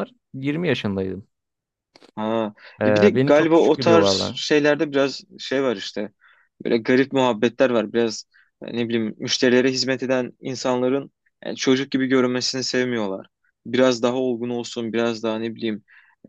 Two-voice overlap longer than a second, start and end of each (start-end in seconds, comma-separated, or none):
2.8-4.4